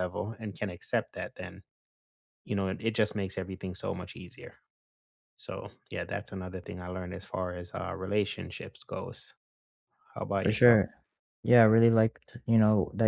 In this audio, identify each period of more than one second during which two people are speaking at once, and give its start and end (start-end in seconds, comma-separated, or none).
none